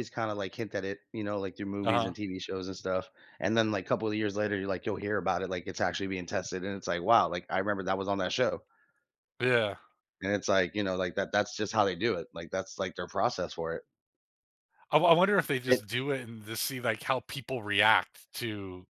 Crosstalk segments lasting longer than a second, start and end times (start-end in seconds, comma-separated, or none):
none